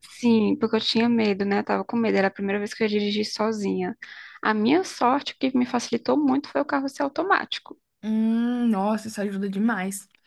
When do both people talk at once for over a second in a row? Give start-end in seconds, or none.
none